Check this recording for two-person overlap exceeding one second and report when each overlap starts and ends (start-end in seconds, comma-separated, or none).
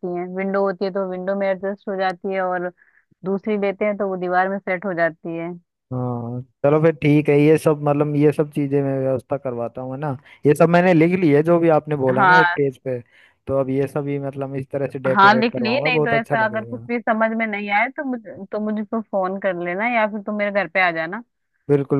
15.1-16.9